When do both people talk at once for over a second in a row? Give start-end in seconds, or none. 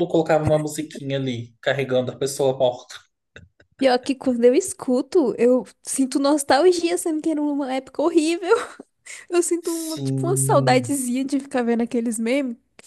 9.7-11.0